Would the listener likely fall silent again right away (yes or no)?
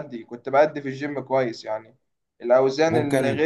yes